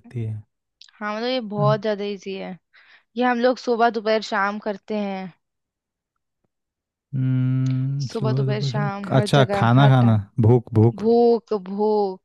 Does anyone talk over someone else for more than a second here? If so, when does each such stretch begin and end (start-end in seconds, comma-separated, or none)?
8.0-10.2